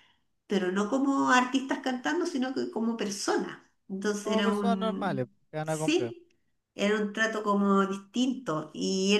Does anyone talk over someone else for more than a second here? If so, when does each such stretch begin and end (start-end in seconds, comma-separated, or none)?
4.2-6.2